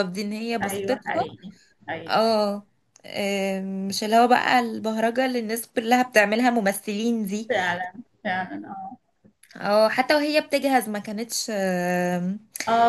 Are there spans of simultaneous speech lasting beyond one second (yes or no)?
no